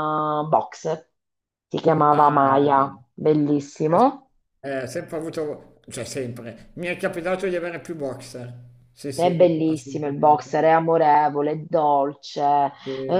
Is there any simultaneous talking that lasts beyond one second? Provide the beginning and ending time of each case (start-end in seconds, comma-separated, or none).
9.1-10.6